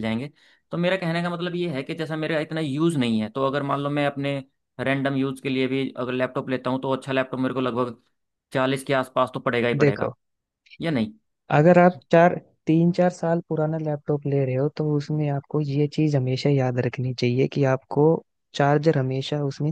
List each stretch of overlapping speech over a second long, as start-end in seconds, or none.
none